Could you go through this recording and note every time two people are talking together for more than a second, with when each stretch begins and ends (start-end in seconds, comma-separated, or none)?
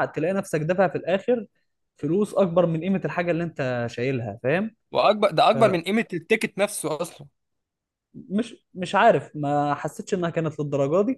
none